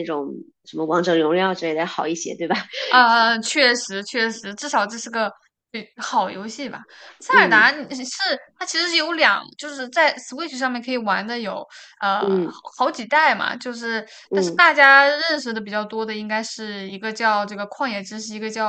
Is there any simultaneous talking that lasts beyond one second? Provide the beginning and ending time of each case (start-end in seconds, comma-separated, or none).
none